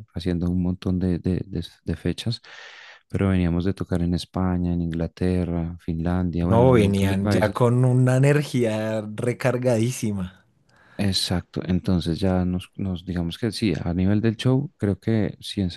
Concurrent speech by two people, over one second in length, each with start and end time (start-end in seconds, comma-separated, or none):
6.4-7.7